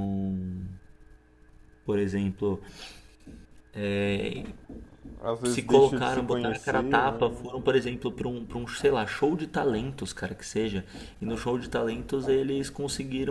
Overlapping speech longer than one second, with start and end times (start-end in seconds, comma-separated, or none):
5.5-7.3